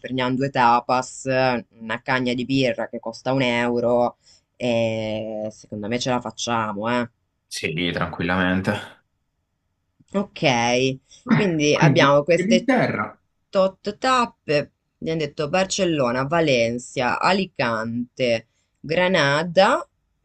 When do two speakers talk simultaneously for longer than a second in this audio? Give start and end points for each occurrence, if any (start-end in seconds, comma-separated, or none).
11.3-12.7